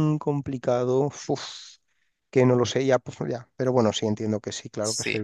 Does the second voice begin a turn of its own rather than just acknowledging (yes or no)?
yes